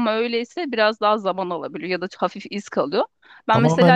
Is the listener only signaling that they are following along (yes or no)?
no